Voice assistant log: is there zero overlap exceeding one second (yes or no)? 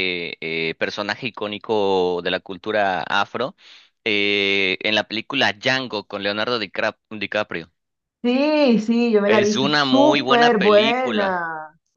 no